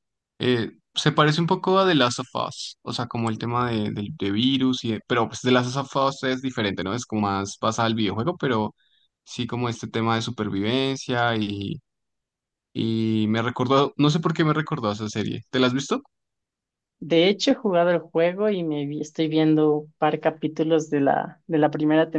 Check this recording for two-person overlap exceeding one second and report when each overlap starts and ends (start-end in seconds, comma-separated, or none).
none